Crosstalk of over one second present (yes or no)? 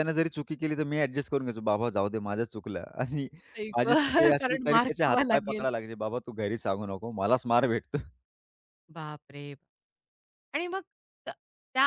yes